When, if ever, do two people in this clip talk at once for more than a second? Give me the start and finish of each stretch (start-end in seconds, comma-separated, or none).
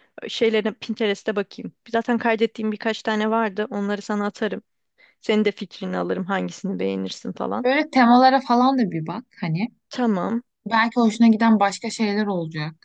none